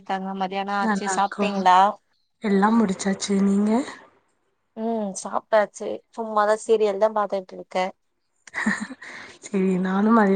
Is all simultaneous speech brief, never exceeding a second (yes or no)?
yes